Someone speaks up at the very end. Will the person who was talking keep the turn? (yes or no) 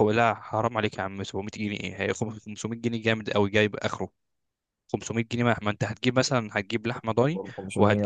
yes